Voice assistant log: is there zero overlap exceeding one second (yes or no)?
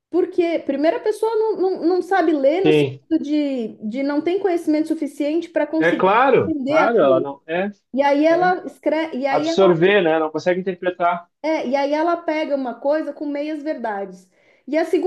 no